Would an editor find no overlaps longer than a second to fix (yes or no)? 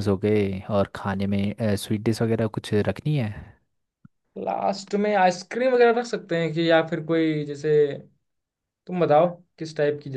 yes